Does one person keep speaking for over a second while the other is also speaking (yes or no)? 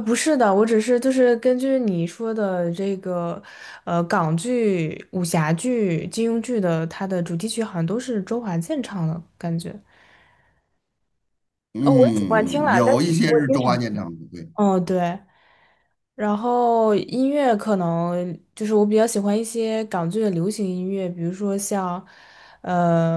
yes